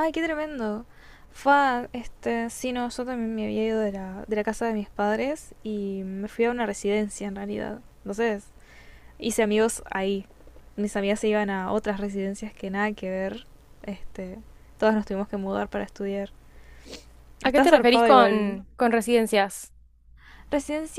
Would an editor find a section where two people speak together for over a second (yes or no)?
yes